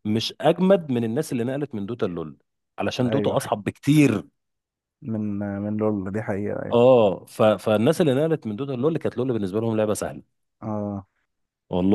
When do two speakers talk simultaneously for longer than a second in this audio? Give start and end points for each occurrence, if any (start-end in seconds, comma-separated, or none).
none